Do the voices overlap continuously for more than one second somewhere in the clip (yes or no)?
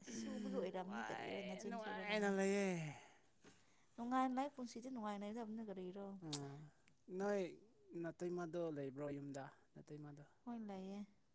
yes